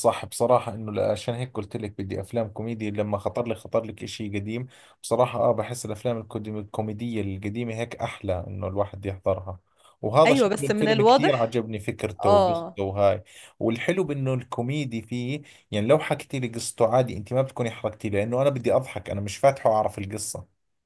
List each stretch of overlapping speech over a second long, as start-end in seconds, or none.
10.2-11.6